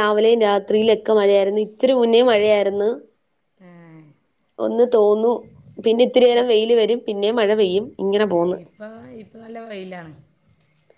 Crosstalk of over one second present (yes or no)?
no